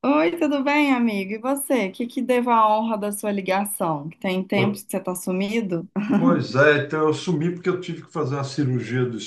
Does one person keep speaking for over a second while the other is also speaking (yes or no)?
no